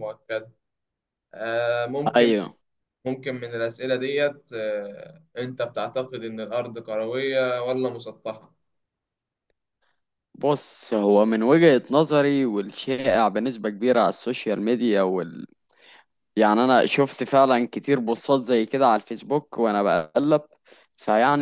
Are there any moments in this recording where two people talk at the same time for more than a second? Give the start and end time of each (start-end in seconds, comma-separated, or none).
none